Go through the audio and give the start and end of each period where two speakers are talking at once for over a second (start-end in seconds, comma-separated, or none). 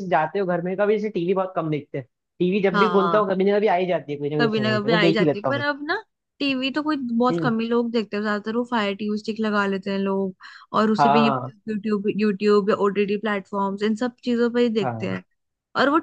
4.4-5.7